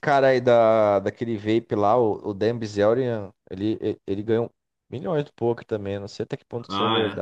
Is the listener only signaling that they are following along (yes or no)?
no